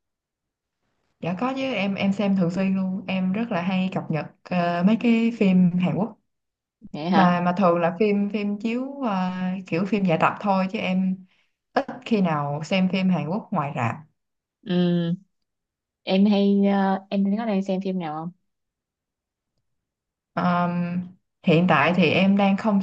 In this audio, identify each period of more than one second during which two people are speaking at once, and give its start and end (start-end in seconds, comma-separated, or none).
none